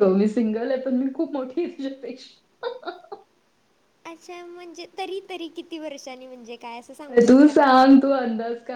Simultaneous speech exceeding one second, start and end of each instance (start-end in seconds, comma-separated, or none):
none